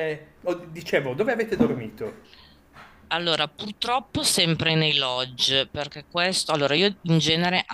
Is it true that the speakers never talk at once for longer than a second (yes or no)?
yes